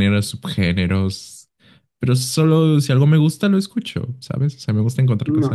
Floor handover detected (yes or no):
yes